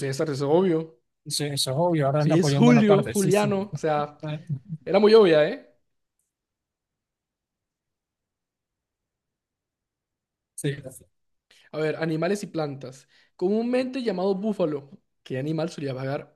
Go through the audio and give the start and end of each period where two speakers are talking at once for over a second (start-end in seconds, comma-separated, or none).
2.2-3.5